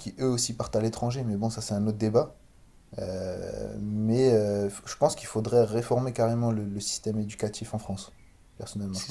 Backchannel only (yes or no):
no